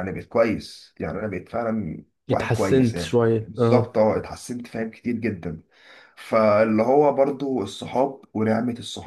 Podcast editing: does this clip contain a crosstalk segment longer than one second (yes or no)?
yes